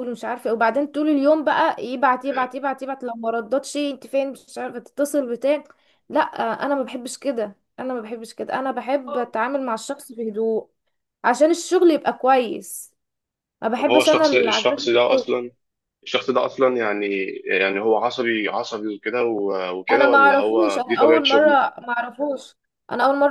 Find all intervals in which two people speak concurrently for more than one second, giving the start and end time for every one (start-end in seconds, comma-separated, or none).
13.8-15.3, 19.9-21.6